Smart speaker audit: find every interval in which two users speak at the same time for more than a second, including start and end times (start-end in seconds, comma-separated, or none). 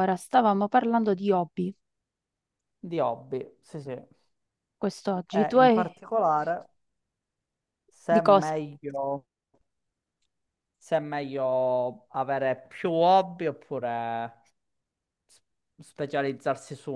none